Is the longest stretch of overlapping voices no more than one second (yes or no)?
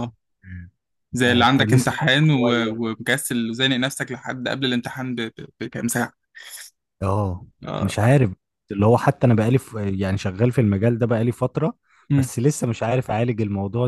no